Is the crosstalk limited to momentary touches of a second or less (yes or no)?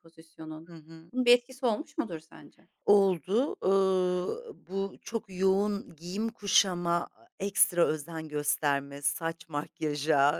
yes